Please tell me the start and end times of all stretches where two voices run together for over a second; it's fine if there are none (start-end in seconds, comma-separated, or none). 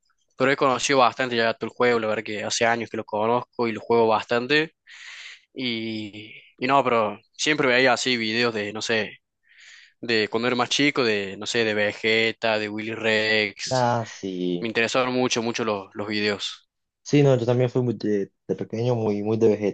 none